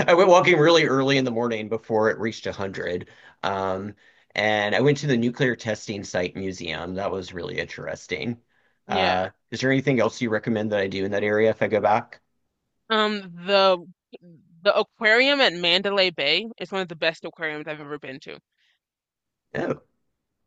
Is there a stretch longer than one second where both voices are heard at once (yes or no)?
no